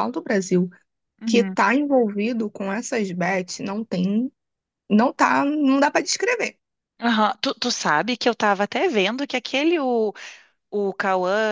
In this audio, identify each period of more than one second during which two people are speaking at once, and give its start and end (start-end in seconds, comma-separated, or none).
none